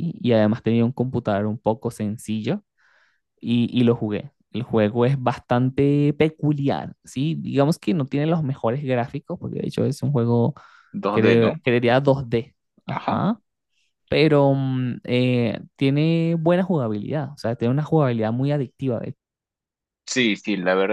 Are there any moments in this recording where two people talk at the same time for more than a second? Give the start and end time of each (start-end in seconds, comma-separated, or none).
none